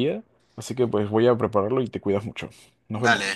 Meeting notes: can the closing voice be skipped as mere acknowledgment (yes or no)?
no